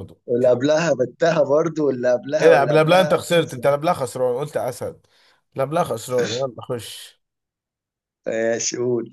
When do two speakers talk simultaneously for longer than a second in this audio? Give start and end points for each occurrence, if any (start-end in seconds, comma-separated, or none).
2.4-3.6